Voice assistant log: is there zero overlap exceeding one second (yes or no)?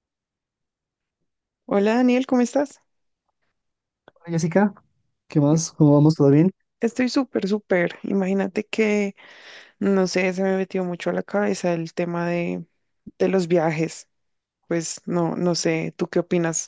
yes